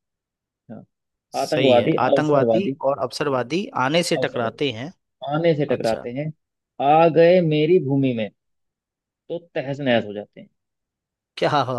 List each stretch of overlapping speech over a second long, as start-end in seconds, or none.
1.4-2.7